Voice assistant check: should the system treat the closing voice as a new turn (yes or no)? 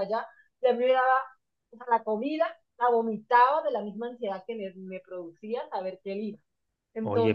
yes